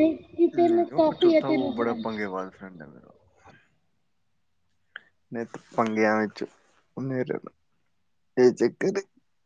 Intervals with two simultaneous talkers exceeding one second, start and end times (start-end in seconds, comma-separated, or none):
0.5-2.0